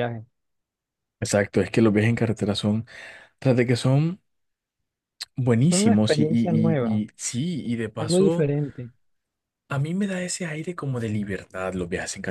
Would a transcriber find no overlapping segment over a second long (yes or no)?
no